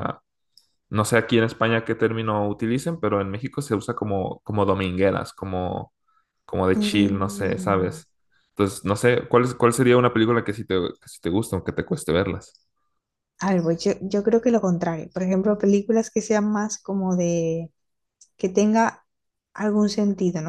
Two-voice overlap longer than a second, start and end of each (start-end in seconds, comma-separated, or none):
6.8-8.0